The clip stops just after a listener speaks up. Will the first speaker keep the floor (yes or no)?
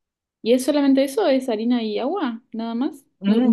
no